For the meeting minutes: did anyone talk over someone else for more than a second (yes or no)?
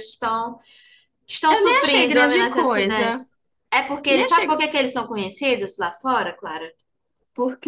yes